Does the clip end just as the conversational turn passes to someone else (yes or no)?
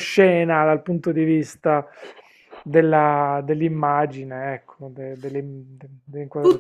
yes